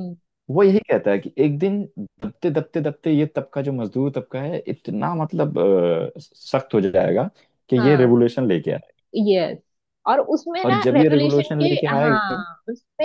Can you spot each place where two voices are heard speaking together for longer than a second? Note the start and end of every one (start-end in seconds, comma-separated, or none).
10.6-12.4